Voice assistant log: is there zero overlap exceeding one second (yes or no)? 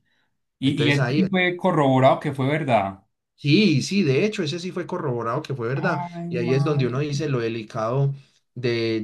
no